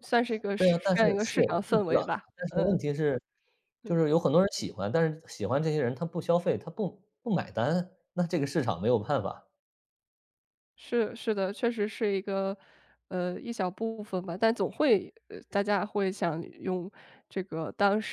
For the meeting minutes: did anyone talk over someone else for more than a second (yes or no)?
yes